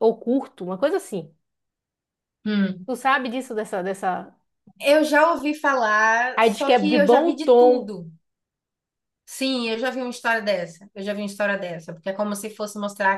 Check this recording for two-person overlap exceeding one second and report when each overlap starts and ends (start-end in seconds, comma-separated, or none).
6.3-7.9